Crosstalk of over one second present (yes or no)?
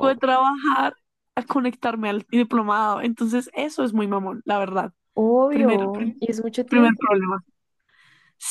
yes